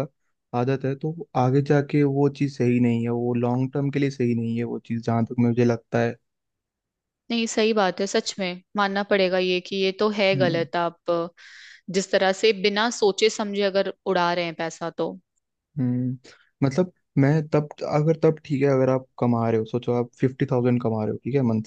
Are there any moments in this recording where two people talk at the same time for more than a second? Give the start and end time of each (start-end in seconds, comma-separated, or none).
none